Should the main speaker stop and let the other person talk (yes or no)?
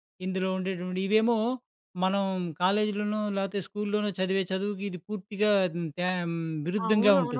yes